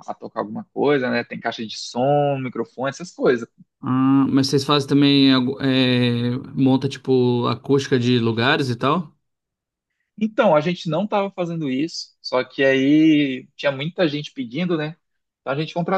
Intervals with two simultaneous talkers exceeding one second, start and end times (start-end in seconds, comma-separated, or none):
none